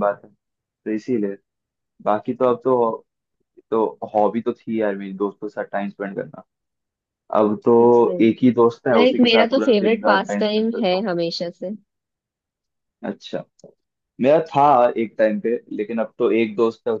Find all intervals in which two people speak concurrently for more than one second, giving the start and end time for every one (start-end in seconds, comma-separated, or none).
8.9-11.1